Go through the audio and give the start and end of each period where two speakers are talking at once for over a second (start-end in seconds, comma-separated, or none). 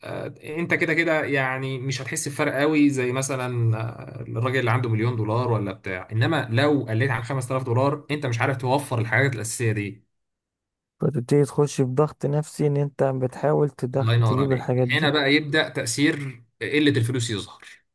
13.9-15.1